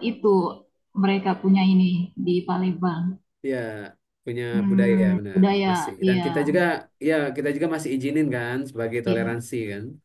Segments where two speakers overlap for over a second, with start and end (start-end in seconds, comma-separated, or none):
4.5-6.6